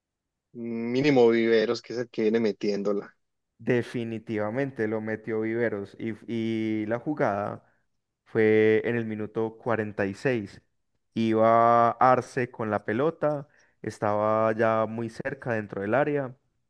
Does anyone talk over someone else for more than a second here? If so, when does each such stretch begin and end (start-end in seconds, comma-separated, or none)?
none